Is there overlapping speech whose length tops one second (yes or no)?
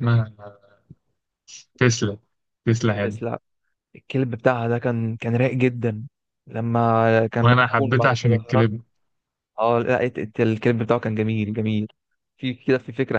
yes